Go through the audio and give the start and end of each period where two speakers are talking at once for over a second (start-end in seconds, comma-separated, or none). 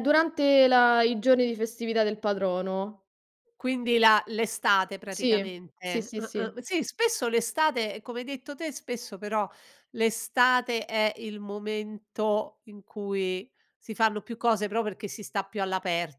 5.1-6.6